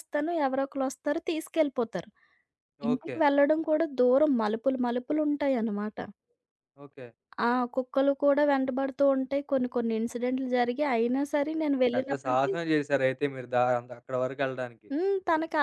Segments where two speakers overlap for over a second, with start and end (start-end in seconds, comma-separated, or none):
none